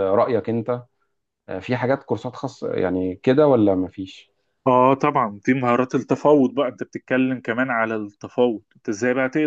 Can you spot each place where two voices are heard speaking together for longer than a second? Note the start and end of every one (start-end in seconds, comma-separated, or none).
none